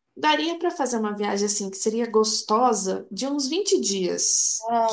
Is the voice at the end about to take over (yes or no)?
yes